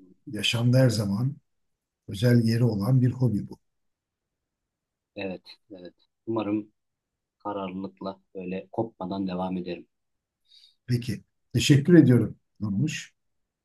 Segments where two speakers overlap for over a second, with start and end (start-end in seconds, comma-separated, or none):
none